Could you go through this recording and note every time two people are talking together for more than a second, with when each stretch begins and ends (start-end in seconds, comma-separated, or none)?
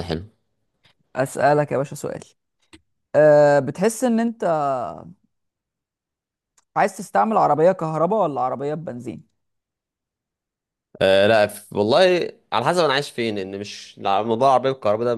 none